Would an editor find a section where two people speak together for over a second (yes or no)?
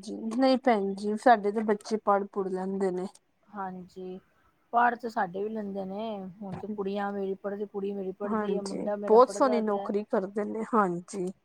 yes